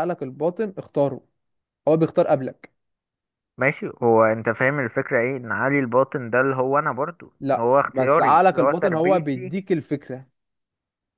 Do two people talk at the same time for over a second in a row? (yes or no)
yes